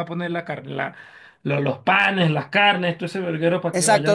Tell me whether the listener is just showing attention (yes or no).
no